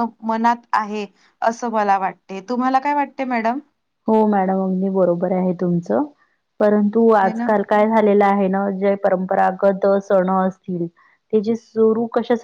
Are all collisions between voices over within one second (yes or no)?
yes